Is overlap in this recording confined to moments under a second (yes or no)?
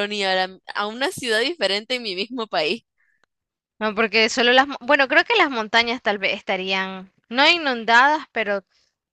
yes